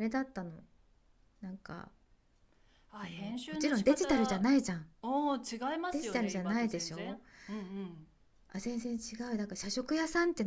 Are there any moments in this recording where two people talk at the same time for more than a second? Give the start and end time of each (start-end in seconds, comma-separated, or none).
3.0-4.5, 5.9-7.2